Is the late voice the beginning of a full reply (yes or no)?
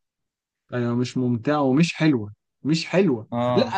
no